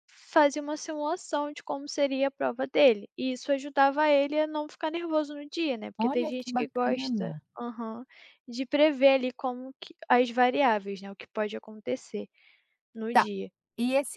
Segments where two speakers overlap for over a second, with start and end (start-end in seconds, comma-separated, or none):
6.0-7.4